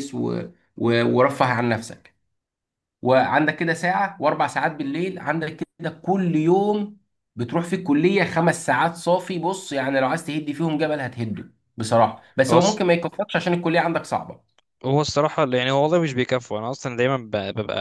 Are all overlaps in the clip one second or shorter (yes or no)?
yes